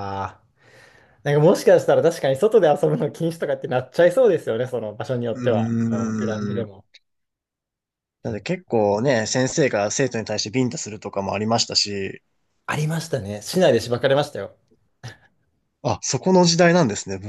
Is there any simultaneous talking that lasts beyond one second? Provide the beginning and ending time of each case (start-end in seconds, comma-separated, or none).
5.3-6.7